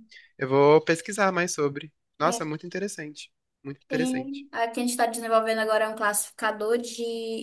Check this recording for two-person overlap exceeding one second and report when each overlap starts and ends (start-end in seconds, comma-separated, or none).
none